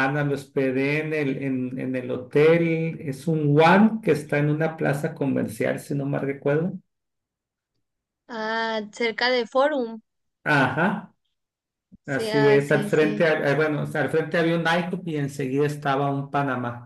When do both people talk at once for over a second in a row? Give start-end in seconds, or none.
12.1-13.3